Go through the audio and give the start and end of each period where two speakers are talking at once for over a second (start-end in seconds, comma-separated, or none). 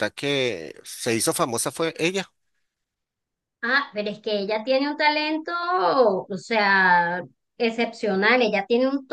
none